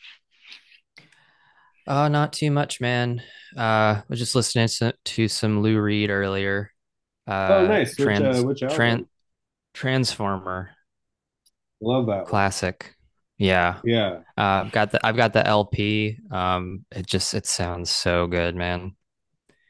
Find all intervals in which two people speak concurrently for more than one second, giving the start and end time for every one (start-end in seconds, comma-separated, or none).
7.5-9.0